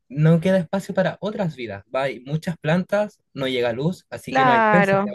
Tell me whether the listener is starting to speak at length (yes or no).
yes